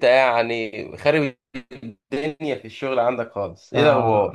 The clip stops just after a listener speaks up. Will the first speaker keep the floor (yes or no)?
no